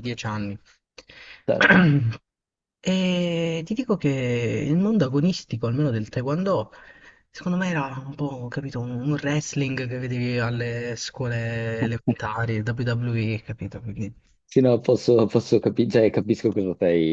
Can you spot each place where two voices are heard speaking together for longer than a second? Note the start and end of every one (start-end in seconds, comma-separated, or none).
none